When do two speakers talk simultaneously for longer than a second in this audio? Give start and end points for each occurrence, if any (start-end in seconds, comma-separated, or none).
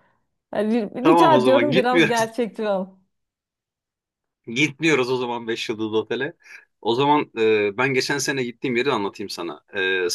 1.0-2.3